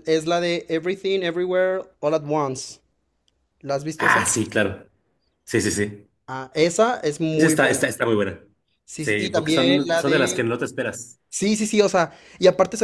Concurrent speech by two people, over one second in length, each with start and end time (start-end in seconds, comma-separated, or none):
8.9-10.4